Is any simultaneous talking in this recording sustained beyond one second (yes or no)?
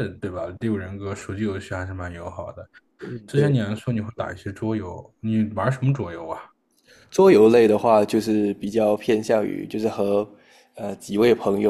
no